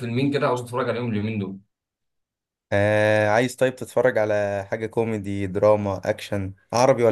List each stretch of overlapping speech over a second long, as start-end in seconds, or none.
none